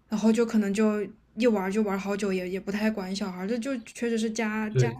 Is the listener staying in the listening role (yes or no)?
no